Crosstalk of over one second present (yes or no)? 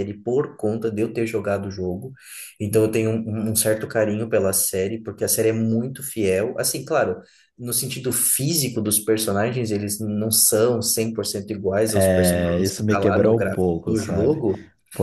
yes